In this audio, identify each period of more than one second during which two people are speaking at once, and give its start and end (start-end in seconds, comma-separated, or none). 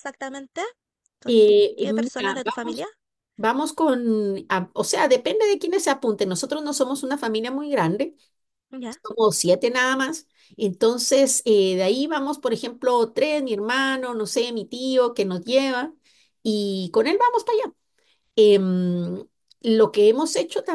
1.3-2.8